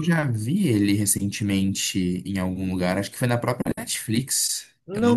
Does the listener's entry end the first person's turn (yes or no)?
yes